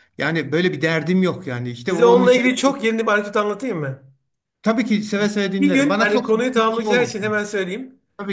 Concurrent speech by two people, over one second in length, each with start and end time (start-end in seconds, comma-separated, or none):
5.6-7.1